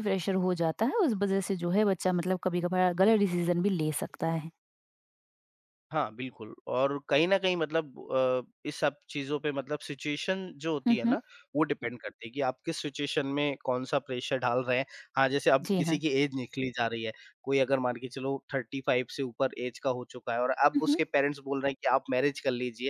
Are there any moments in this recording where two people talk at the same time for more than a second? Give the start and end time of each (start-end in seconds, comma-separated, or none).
none